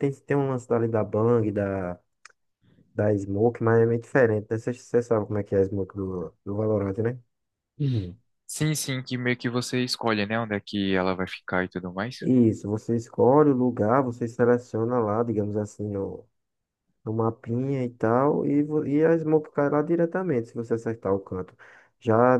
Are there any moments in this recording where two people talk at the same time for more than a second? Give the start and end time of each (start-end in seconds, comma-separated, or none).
none